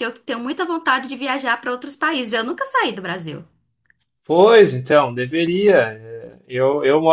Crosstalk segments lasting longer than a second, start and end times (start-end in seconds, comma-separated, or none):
none